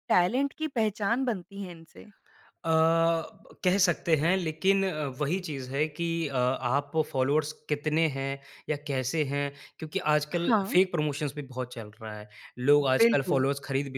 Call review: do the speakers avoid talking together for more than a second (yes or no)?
yes